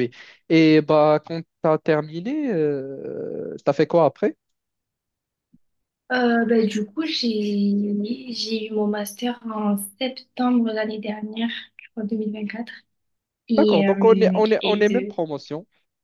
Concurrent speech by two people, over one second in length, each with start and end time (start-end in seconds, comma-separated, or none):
13.6-15.2